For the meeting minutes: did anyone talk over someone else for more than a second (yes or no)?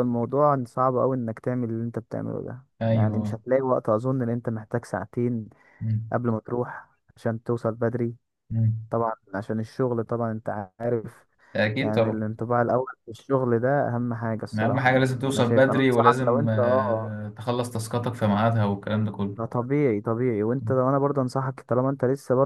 yes